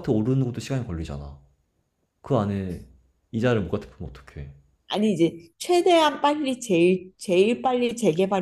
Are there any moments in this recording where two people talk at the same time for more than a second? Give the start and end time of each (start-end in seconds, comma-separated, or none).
none